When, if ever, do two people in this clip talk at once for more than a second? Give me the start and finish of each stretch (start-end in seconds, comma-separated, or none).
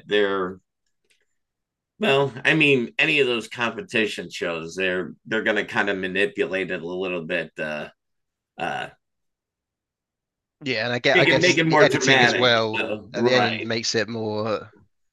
11.1-13.7